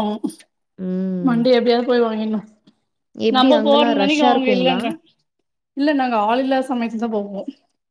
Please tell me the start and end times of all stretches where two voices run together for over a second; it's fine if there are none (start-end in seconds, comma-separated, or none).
3.4-4.8